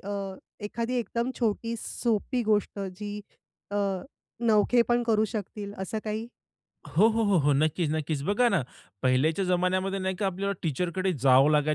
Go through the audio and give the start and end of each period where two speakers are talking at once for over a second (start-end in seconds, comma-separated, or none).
none